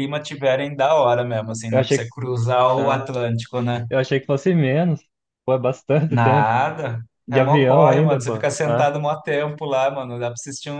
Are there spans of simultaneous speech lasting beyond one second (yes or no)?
yes